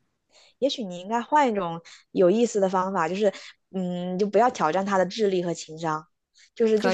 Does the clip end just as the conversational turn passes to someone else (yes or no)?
no